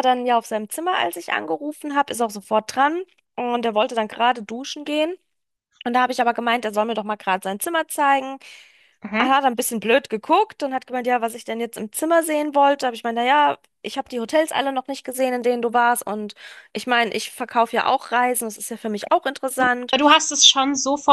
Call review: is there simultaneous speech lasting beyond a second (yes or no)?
no